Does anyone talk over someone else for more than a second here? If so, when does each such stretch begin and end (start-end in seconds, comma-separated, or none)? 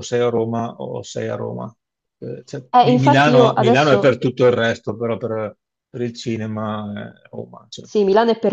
2.7-4.2